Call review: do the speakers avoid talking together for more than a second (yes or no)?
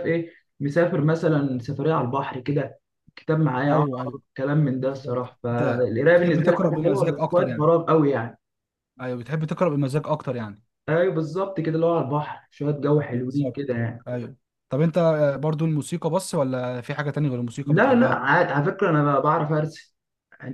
no